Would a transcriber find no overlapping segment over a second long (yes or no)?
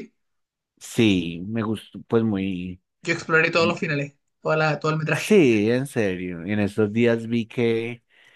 yes